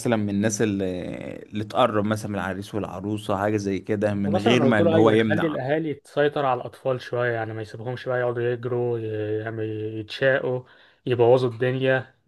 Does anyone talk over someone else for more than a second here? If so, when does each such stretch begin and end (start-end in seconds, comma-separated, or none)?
4.3-5.6